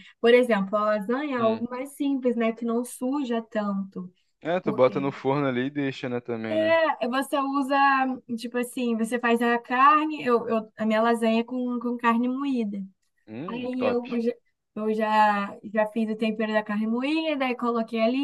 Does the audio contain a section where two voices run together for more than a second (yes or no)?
no